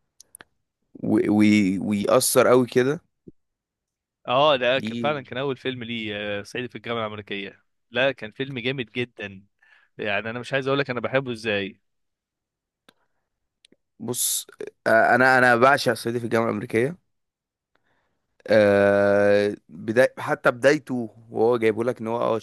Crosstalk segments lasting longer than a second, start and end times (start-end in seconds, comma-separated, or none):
none